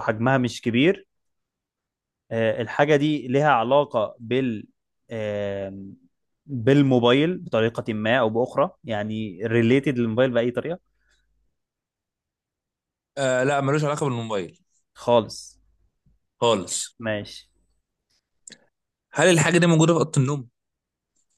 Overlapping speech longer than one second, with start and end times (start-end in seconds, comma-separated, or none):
none